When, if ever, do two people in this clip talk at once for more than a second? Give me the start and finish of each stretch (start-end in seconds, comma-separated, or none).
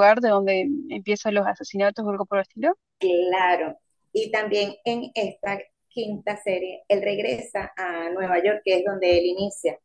none